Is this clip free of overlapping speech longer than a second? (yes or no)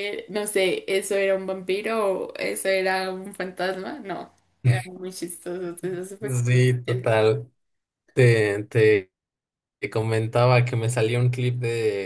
yes